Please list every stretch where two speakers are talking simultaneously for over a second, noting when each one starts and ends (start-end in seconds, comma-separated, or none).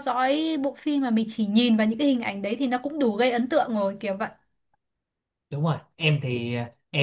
none